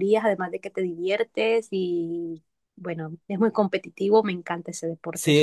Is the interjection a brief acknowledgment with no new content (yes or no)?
no